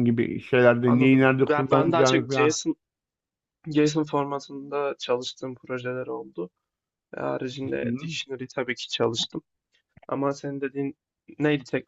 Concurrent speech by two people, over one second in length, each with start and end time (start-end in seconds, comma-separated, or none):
0.8-2.6